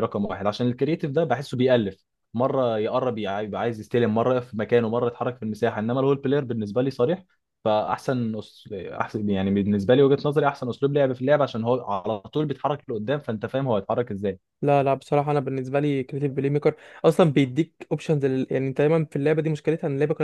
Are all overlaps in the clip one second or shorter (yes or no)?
yes